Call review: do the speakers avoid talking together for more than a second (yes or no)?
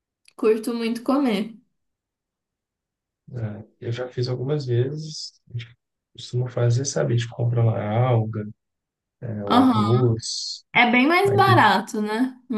yes